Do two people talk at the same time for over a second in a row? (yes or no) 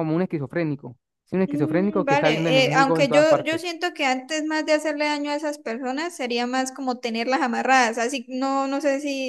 yes